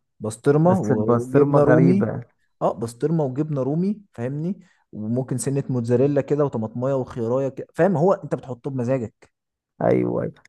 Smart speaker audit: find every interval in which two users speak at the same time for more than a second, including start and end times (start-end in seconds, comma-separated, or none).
0.6-2.1